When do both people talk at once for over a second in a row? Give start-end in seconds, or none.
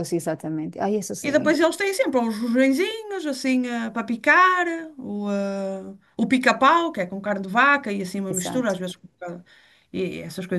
none